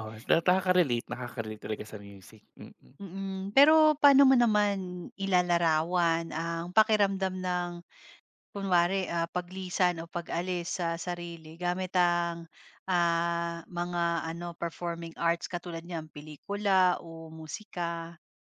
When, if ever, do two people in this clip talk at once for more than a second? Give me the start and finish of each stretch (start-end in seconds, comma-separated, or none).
none